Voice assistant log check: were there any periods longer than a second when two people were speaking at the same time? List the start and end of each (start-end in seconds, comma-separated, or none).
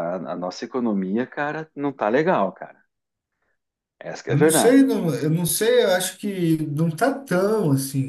none